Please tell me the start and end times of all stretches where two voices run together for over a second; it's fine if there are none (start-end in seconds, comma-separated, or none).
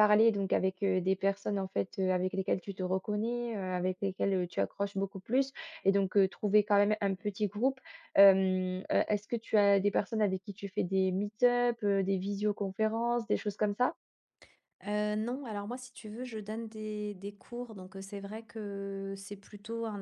none